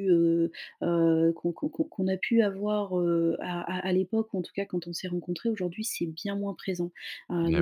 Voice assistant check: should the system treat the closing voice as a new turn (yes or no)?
no